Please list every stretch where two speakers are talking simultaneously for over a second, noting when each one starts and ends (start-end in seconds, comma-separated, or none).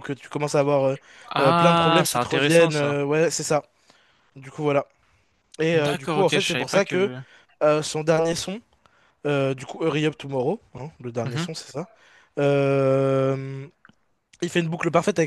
1.4-3.0, 5.7-7.1